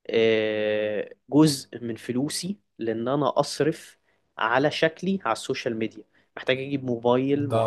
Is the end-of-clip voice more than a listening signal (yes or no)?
no